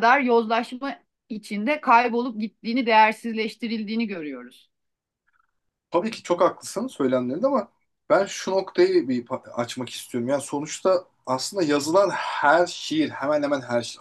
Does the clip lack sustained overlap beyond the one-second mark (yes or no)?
yes